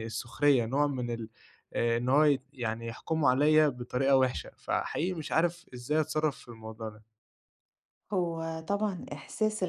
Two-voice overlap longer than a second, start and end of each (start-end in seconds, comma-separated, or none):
none